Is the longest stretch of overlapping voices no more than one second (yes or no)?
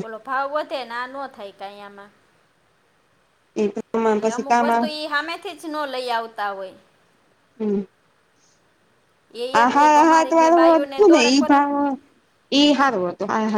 no